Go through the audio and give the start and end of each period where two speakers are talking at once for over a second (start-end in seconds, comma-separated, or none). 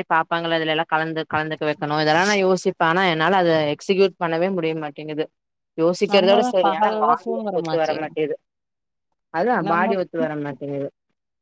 6.1-8.0